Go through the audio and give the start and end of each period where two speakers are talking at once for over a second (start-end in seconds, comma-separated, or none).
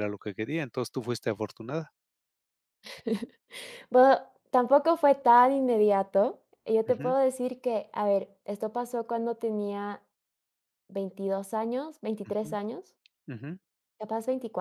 none